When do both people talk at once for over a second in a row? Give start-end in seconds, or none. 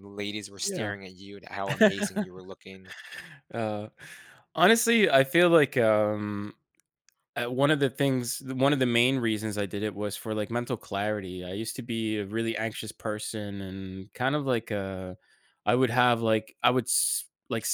none